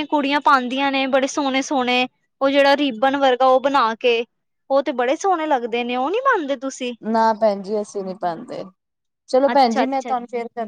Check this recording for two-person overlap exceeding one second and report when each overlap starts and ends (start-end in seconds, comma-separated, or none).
none